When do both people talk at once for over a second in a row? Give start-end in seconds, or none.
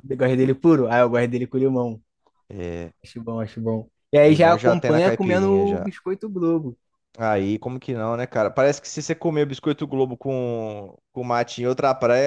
4.2-5.9